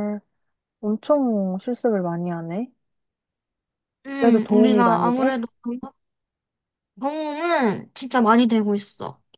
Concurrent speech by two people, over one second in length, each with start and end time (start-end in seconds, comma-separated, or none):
4.2-5.4